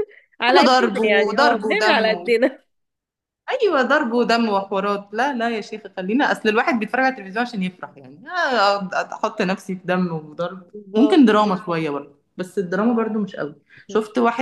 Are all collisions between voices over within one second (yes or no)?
no